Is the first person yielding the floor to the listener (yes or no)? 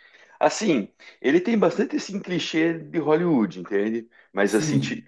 no